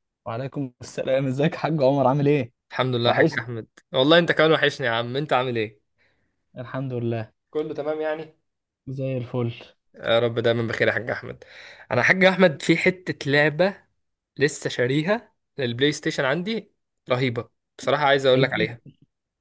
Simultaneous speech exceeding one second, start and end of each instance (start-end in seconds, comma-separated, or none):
none